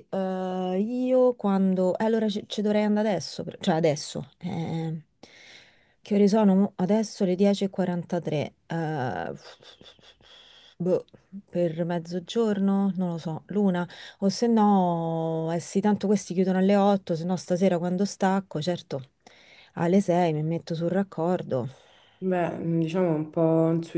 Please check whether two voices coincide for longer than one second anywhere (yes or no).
no